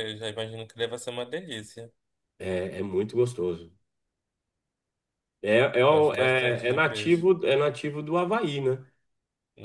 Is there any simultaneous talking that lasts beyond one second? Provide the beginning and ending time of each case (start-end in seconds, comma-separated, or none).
5.9-7.3